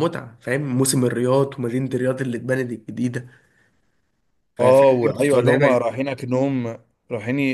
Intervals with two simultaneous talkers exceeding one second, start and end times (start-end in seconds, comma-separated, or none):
4.6-5.9